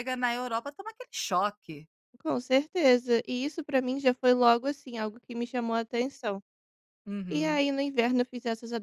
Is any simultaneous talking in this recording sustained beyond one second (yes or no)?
no